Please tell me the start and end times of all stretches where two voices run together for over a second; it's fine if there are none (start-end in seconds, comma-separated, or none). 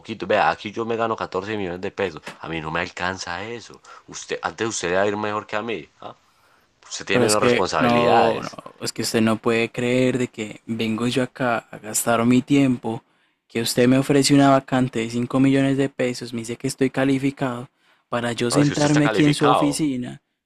7.1-8.6, 18.5-19.9